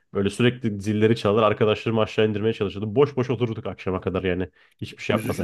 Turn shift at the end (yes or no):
yes